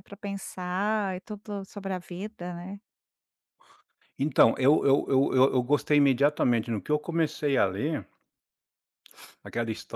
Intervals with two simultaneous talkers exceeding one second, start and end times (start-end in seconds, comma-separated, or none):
none